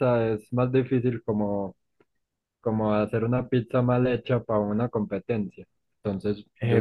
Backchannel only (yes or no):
no